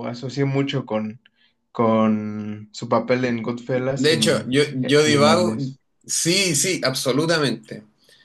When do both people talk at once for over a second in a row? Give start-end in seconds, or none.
3.7-5.6